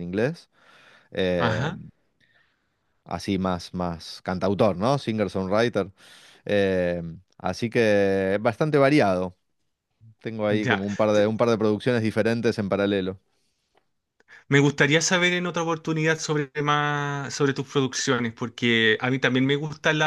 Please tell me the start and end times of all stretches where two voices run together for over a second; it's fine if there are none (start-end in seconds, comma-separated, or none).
none